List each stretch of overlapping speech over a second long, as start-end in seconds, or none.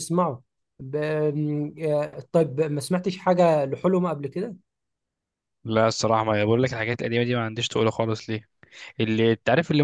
none